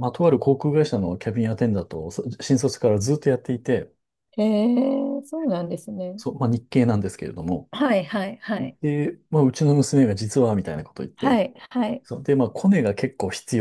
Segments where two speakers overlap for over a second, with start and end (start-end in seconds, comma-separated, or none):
none